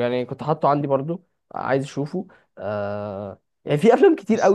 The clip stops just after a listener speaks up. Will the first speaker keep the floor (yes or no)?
yes